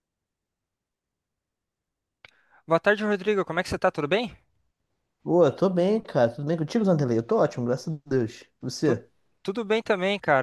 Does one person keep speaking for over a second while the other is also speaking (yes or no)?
no